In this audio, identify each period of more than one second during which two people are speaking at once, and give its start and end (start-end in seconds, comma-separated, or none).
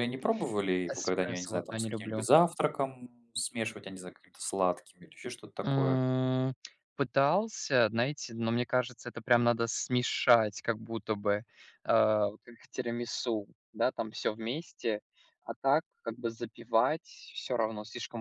0.9-2.2